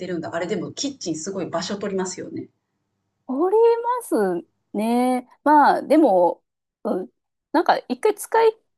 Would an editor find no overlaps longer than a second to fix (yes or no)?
yes